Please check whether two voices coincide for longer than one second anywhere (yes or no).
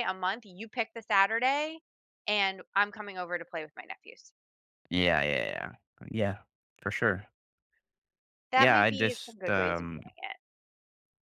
yes